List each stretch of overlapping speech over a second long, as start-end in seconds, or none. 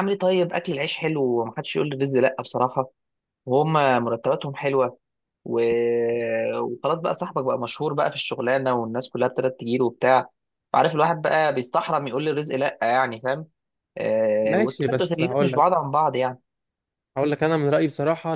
14.4-15.8